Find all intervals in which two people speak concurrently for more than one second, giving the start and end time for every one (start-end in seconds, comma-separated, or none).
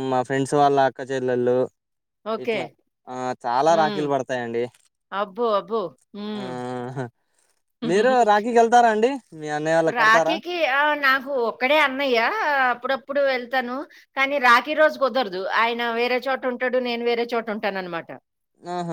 none